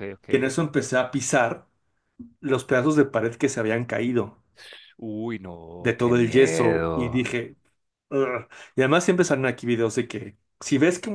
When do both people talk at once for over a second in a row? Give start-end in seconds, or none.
5.8-7.3